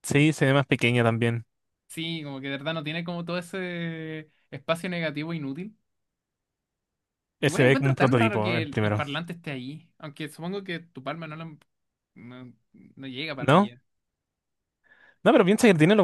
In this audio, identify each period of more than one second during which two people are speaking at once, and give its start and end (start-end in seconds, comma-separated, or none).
7.4-9.0